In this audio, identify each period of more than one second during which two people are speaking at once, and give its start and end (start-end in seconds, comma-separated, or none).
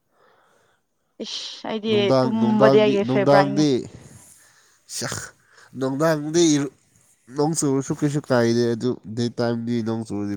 1.9-3.6